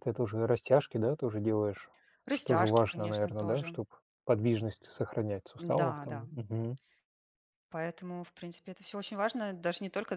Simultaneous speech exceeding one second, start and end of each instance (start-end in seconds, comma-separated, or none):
2.3-3.8